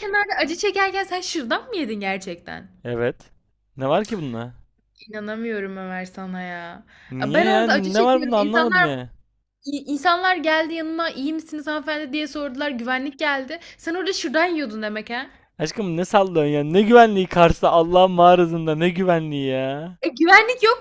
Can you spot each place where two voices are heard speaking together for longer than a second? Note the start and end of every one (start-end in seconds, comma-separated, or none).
7.3-8.9